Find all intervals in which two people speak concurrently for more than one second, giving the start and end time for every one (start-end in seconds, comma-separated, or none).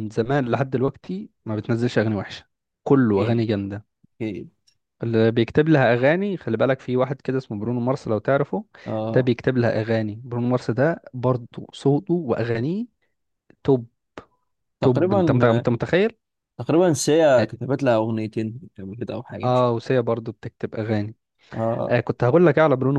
none